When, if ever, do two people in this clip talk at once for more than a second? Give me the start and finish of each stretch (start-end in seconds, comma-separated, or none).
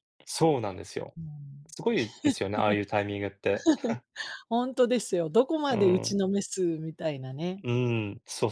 none